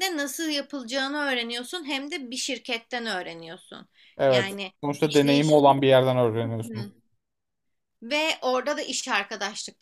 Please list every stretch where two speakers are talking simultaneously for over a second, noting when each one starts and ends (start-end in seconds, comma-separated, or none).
4.3-5.9